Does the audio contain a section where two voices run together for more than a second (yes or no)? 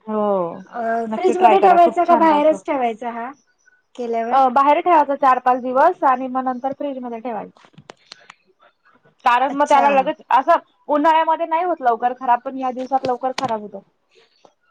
yes